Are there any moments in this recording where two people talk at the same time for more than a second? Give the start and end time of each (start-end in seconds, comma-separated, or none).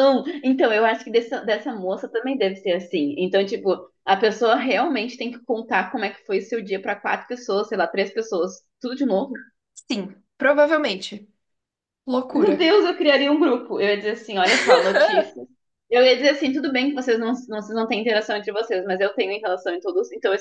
none